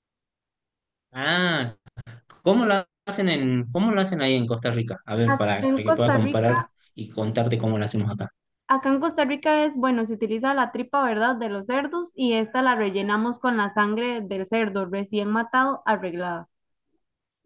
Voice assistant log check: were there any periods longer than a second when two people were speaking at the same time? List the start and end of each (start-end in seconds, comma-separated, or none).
5.3-6.7